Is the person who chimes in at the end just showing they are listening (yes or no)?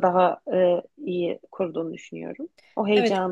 no